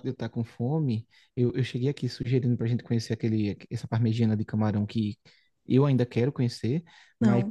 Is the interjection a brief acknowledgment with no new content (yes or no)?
yes